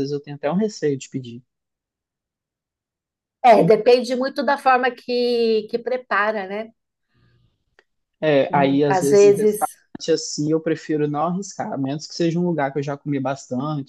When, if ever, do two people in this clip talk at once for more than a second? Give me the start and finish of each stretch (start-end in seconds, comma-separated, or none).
8.5-9.7